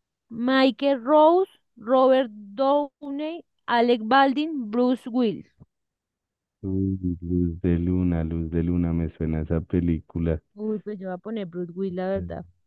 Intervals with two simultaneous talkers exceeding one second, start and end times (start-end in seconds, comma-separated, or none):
none